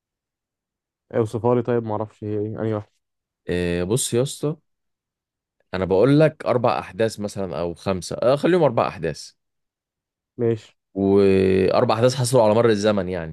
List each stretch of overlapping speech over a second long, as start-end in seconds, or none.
none